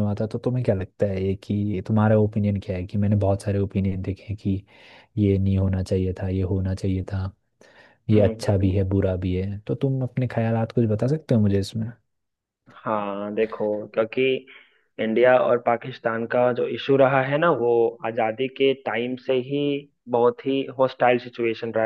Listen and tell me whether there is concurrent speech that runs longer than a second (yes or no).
no